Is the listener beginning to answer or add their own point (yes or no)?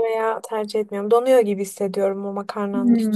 yes